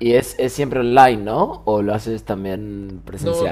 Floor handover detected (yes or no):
yes